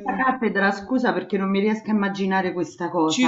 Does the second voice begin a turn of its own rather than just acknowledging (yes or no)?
yes